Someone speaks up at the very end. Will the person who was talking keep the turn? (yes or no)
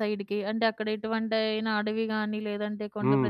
no